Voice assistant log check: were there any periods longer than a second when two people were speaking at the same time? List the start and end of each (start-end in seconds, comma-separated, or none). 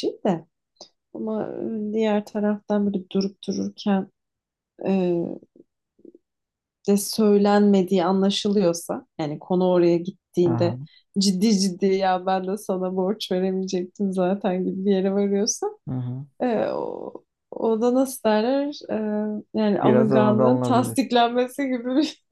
19.8-21.1